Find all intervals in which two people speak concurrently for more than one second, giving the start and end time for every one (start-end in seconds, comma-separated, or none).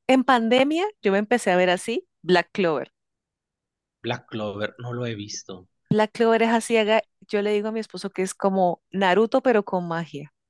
none